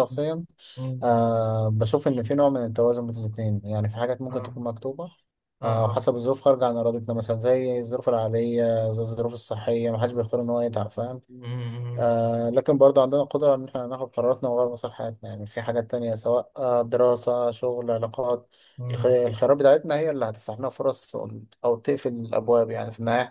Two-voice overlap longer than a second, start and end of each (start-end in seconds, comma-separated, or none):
none